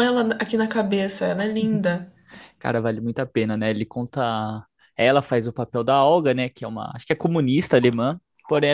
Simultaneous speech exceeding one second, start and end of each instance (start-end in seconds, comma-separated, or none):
none